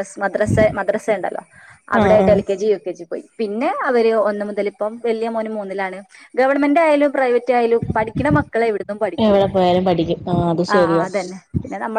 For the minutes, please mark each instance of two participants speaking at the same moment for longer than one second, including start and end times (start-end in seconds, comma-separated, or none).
none